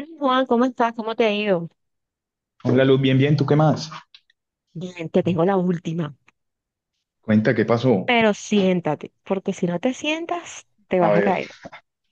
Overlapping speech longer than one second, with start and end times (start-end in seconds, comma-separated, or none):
none